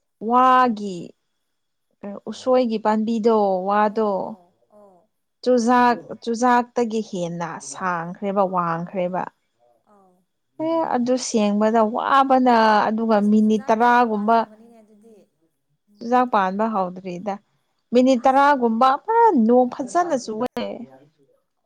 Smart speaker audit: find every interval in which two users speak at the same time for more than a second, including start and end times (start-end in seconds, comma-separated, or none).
13.2-14.5